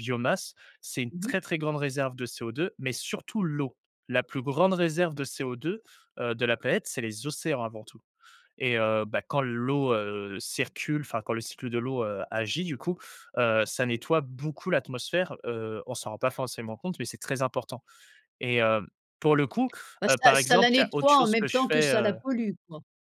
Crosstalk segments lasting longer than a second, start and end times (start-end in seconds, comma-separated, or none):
20.1-22.2